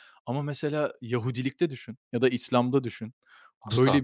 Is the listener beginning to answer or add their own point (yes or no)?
no